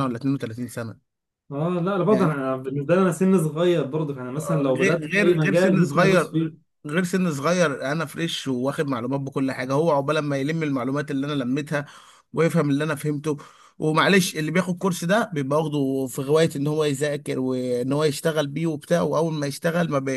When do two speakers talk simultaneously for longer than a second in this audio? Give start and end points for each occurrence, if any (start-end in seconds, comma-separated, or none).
4.4-6.7